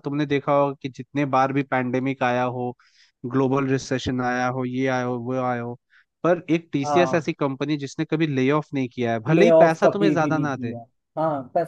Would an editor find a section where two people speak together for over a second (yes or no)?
yes